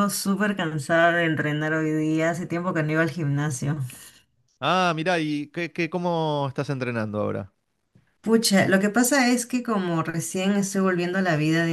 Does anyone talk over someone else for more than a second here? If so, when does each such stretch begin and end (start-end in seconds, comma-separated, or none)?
none